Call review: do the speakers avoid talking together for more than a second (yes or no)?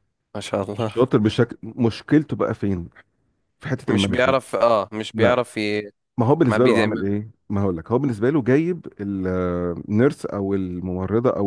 yes